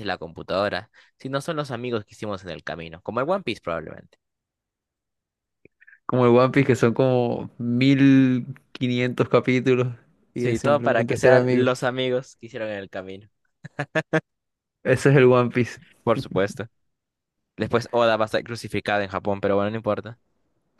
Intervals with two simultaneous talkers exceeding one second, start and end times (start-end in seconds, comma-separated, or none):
10.3-11.7